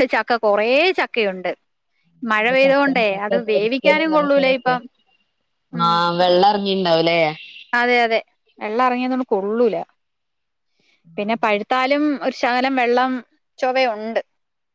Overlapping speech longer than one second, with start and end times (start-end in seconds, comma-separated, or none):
2.6-4.8